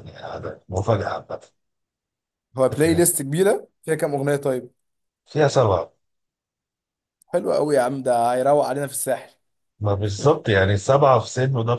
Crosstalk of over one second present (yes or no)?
no